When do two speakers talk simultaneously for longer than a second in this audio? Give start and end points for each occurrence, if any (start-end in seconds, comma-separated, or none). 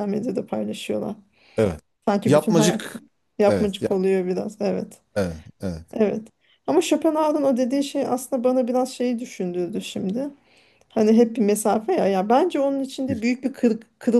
none